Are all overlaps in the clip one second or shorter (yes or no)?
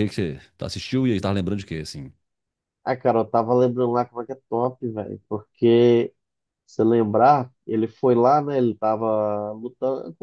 yes